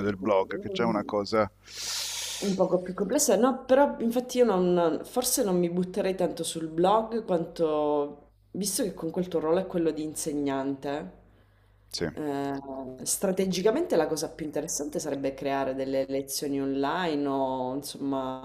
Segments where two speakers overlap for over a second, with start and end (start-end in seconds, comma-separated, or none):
none